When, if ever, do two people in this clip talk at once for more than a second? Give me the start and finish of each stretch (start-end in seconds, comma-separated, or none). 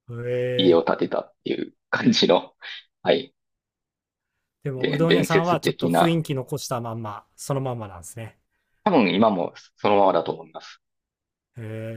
4.8-6.2